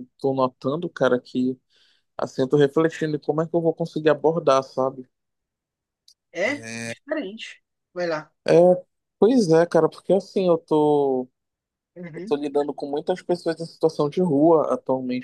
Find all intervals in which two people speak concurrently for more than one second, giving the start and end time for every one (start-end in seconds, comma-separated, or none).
none